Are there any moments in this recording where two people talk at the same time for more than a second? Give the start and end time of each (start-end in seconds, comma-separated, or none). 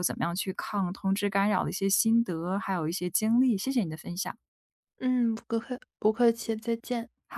none